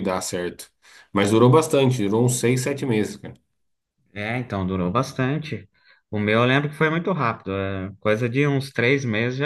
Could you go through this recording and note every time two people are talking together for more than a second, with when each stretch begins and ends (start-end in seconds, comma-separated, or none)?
none